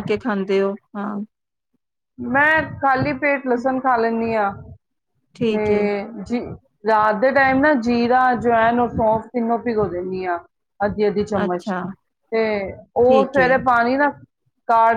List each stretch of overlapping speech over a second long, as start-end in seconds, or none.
none